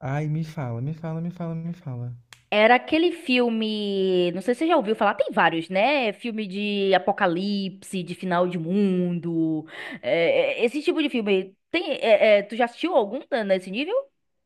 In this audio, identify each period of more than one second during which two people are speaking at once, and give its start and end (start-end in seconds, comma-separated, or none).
none